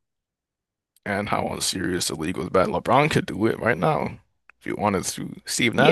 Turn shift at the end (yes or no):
yes